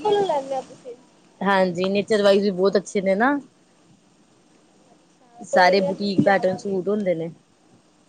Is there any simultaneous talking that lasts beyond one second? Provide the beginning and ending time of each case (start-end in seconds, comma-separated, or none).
5.5-6.8